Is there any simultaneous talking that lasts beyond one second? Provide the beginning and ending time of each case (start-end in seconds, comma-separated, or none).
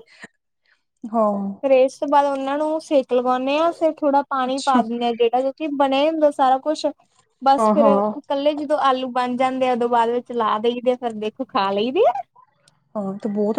none